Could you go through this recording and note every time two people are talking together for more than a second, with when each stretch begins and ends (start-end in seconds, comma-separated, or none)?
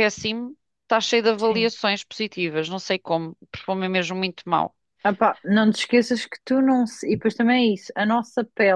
none